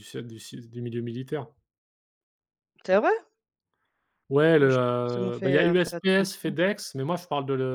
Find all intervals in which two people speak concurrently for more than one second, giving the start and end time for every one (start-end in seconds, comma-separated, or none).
4.6-6.6